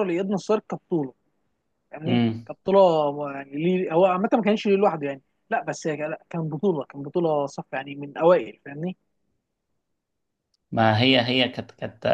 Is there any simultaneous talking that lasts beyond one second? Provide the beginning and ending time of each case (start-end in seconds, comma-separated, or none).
none